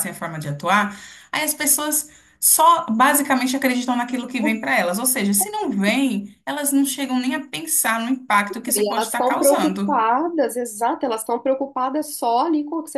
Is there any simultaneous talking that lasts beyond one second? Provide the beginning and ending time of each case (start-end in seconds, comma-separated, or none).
8.8-10.0